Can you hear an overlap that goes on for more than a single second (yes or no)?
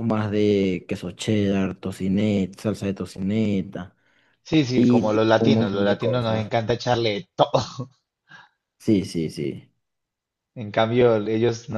yes